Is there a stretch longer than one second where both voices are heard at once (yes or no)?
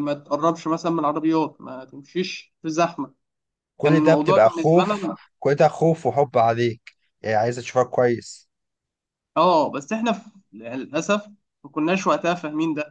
yes